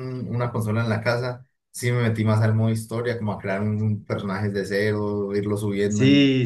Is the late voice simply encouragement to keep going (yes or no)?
no